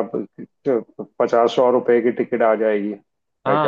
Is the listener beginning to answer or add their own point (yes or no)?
yes